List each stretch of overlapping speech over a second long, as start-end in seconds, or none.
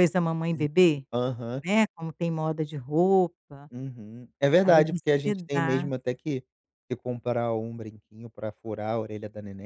4.6-5.9